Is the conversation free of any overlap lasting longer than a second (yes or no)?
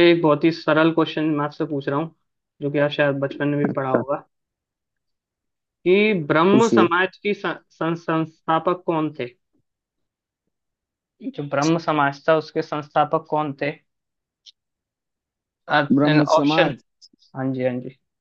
yes